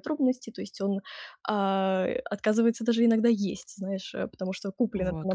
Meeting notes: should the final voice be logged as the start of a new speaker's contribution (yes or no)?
no